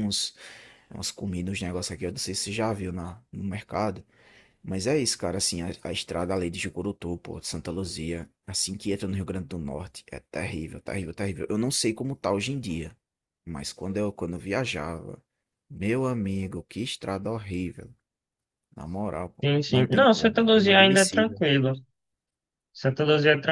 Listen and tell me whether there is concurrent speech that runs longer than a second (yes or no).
yes